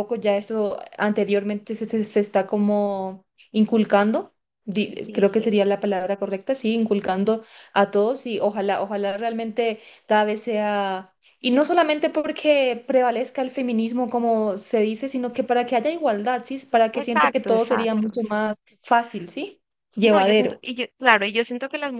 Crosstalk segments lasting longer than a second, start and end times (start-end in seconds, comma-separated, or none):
17.0-18.7